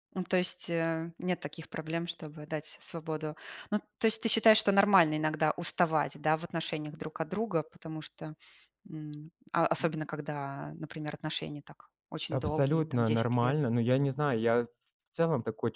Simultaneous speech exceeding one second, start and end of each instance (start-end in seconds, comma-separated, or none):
12.3-13.6